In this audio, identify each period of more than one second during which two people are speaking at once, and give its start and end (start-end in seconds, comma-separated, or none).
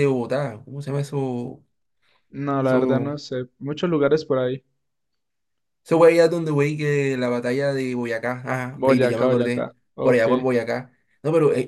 8.7-10.2